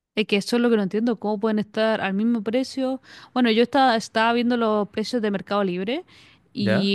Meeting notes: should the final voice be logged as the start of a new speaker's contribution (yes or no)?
no